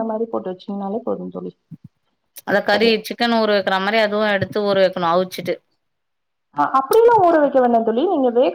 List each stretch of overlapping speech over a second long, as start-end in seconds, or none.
none